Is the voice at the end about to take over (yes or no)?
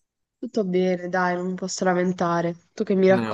yes